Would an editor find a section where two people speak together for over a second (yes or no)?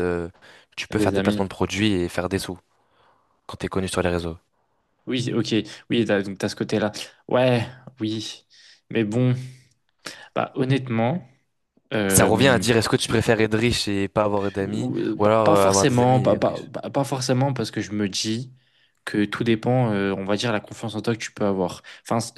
yes